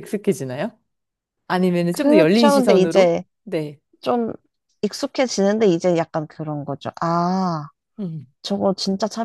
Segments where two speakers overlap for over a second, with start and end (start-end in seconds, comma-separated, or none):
1.9-3.2